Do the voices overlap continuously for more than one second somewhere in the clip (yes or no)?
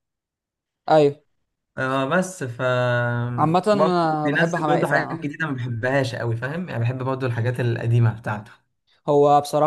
yes